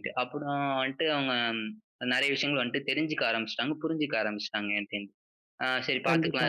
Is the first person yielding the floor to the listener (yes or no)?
no